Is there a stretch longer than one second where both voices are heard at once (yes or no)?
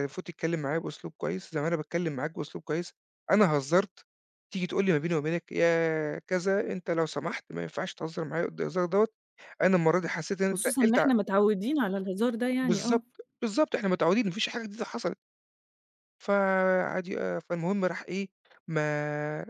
no